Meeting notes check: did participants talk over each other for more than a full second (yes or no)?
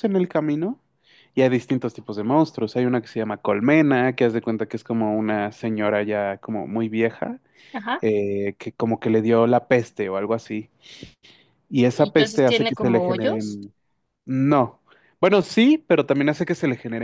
yes